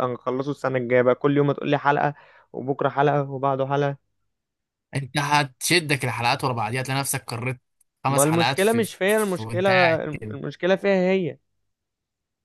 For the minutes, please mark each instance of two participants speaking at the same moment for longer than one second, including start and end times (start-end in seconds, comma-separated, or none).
8.1-10.3